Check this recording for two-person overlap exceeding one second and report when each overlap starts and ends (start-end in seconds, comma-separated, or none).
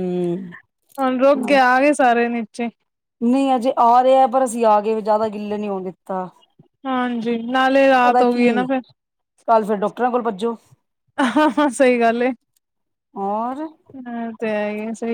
none